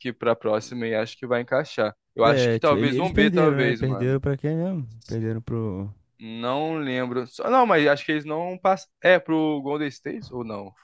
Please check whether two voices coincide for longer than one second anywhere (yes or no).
yes